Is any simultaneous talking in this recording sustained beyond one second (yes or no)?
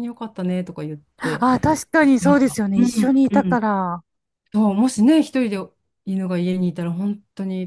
yes